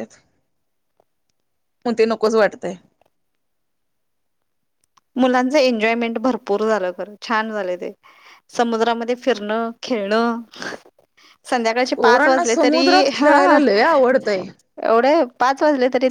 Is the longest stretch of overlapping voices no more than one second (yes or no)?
no